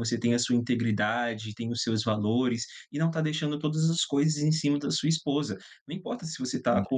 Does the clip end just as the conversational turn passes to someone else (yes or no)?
no